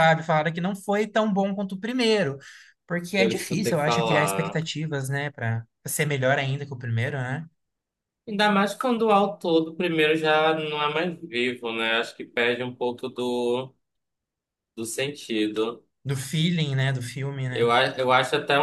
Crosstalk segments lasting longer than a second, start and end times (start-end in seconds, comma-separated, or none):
3.1-4.6